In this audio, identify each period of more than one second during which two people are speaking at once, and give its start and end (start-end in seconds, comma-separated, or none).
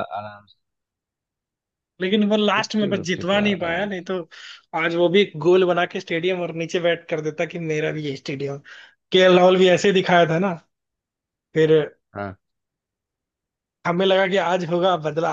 2.6-4.1